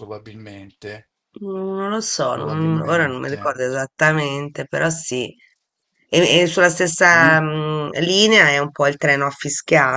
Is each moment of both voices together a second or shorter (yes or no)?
no